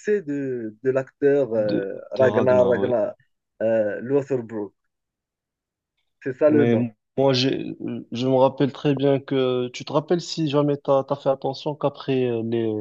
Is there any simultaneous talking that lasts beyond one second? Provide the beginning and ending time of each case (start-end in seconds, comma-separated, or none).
1.6-2.9